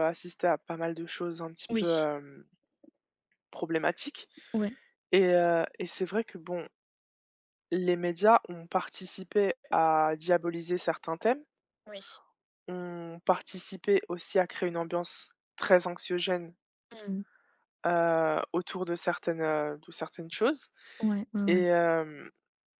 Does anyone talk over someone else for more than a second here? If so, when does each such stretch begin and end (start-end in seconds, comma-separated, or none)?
none